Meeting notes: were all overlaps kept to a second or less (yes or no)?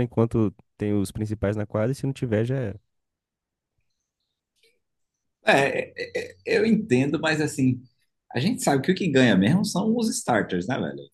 yes